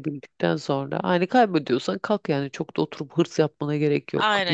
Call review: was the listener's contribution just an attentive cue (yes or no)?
no